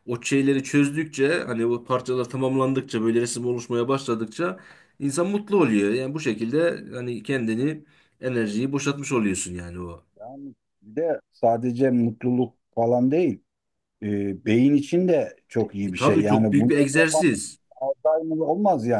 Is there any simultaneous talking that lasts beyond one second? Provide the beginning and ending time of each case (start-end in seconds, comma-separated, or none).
15.8-17.3